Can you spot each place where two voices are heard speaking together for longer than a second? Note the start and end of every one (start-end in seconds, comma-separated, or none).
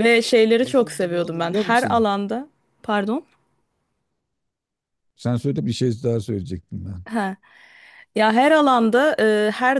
0.6-2.1